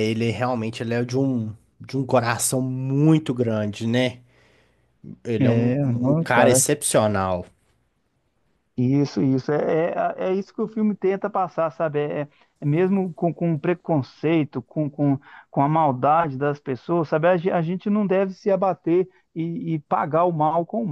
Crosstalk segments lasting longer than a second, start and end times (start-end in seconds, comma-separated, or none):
5.4-6.6